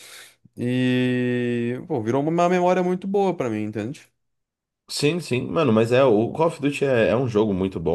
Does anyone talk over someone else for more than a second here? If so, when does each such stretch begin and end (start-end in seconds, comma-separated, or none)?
none